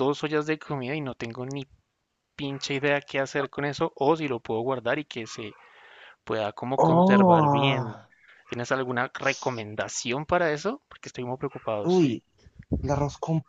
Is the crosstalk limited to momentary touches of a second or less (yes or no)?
no